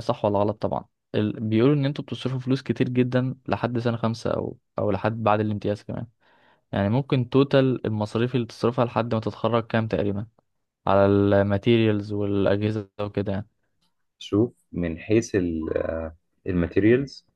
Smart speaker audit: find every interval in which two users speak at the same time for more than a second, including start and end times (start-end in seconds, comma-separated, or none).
none